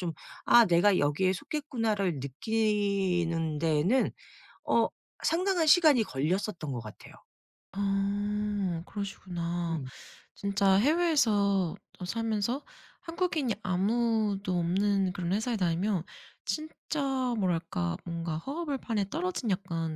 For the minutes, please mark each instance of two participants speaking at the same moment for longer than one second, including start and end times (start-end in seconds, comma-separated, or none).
none